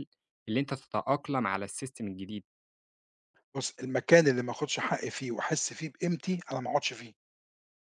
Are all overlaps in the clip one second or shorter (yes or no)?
yes